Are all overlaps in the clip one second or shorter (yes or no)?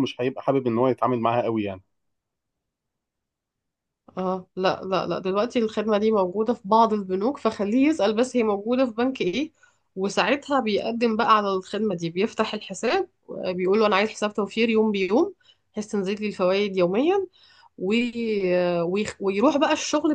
yes